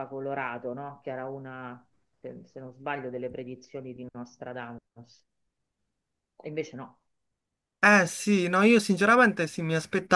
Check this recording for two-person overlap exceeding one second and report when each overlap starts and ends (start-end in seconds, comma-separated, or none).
none